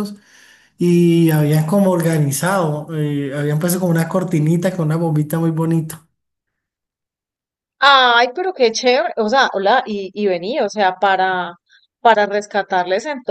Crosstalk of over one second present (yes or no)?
no